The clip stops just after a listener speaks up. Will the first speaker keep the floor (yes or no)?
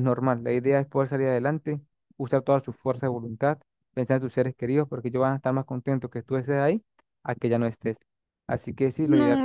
no